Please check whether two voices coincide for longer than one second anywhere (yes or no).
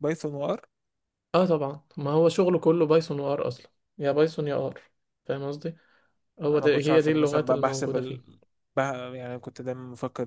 yes